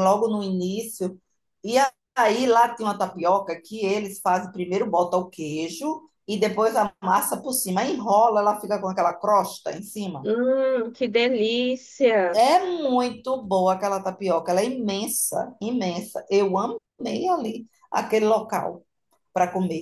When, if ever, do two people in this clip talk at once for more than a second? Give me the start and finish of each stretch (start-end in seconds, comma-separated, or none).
none